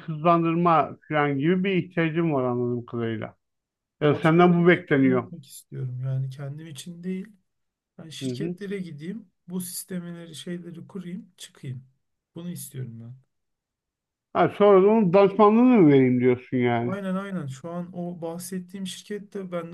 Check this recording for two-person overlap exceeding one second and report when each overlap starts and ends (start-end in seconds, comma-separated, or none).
4.0-5.3